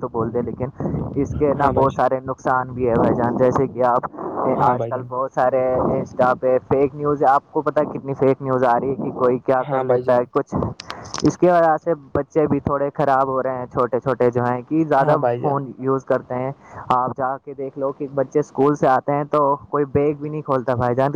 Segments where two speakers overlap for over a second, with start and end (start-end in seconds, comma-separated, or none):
none